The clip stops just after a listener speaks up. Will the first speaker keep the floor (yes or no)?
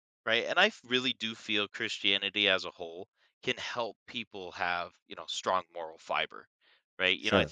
yes